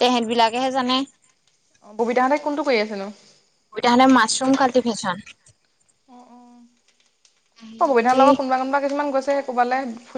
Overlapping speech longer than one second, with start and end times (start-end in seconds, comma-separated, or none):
none